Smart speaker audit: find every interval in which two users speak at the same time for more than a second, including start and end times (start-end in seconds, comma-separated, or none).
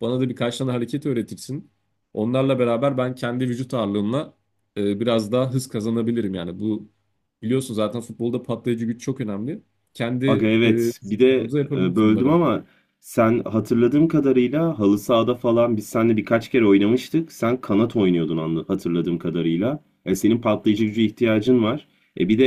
10.6-12.4